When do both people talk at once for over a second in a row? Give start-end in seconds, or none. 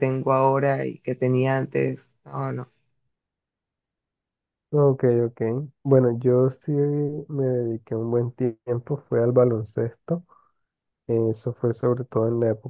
none